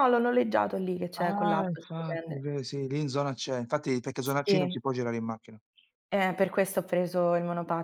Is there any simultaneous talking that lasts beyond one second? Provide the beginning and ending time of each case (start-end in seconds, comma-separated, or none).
1.2-2.5